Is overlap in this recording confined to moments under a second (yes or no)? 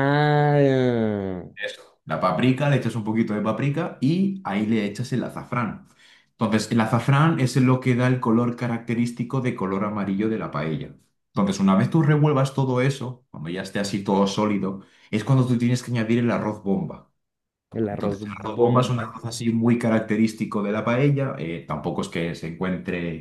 no